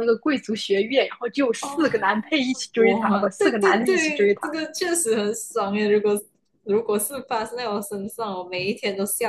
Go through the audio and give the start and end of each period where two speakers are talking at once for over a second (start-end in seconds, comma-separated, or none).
2.8-4.6